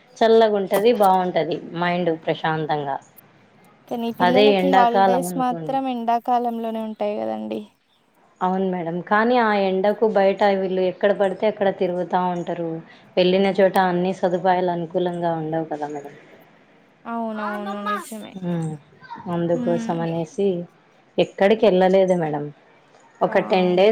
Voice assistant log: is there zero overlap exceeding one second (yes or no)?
no